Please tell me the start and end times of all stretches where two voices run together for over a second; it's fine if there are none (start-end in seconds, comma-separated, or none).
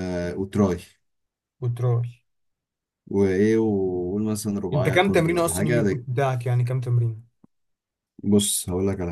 4.7-6.0